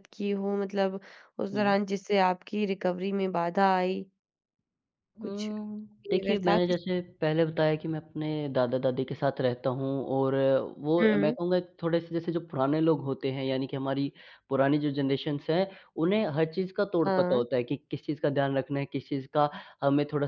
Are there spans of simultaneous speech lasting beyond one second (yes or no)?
yes